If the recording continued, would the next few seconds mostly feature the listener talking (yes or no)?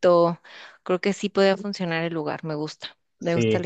yes